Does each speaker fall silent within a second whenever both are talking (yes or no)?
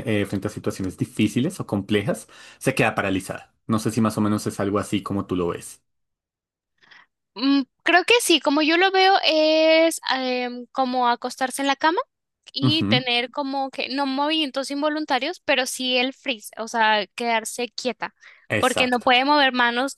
yes